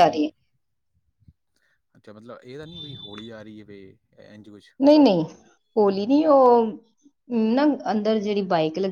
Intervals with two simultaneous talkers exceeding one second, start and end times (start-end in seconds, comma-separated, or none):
none